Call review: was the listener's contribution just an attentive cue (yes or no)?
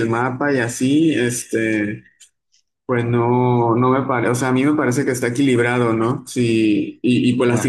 yes